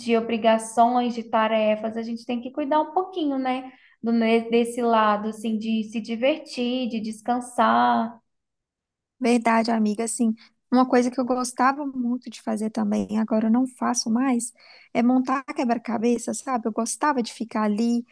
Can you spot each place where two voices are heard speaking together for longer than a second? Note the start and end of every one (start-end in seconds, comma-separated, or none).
none